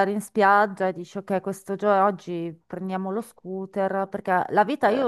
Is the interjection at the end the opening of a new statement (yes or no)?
no